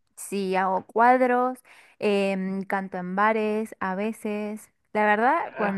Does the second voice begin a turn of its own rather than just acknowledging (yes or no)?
yes